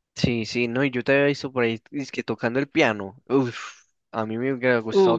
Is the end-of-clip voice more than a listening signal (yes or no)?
no